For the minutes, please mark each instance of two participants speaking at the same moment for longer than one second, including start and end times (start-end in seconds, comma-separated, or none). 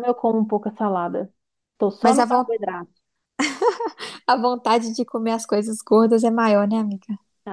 none